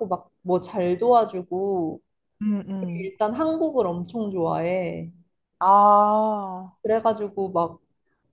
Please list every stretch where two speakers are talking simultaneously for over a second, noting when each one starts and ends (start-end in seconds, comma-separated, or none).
none